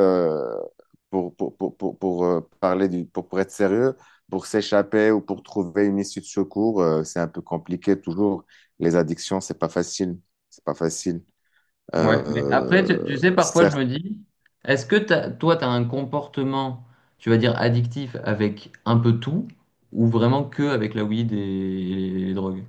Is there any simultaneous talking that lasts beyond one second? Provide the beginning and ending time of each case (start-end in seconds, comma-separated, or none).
11.9-13.8